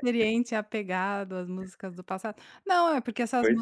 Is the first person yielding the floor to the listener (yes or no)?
no